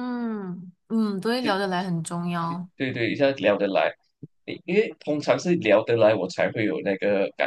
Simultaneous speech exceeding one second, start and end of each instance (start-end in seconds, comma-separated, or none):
none